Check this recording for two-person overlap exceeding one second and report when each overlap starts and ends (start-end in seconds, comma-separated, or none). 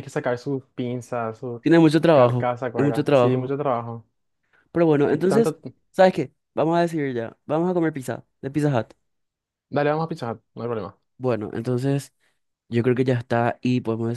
2.1-3.5